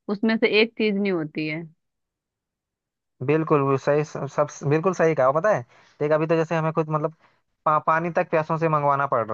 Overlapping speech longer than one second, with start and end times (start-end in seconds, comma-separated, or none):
none